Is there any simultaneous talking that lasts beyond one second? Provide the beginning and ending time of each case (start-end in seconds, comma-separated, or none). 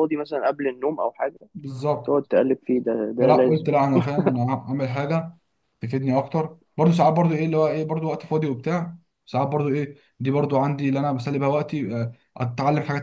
none